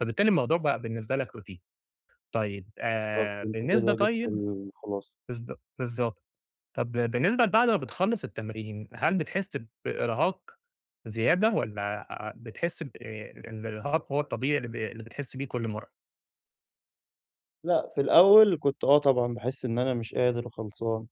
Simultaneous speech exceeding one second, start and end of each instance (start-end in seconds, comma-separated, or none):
3.1-4.4